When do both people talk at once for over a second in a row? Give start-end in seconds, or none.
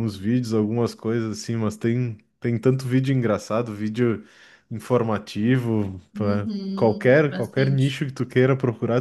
6.1-8.0